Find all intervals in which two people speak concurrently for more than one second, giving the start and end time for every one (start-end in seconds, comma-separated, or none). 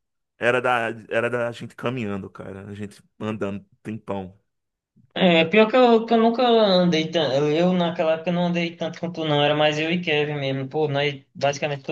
none